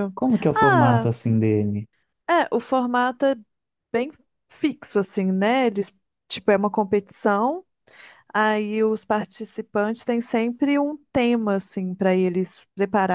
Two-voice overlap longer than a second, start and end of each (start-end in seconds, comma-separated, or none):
none